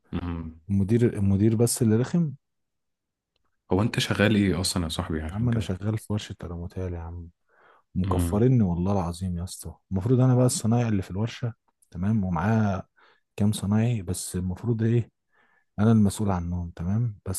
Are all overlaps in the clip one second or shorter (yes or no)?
yes